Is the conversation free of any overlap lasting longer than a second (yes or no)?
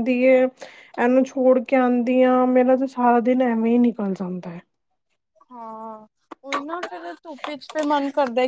yes